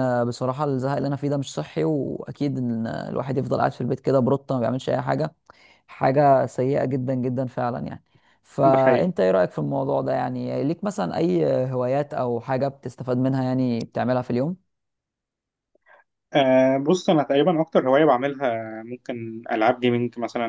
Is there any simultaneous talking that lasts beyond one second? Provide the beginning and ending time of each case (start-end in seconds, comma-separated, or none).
none